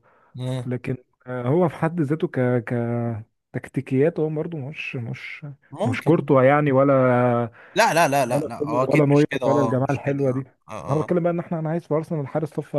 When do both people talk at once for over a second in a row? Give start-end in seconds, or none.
8.3-10.2